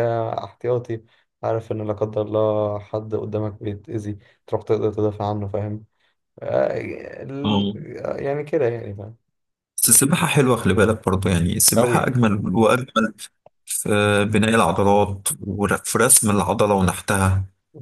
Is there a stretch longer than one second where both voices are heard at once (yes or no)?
no